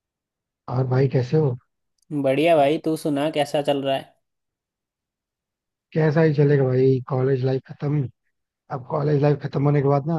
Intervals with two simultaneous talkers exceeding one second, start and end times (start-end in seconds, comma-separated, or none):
none